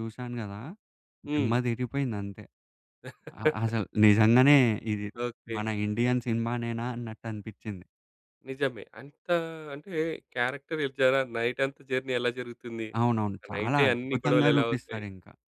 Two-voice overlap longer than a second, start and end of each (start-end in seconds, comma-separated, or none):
13.4-15.0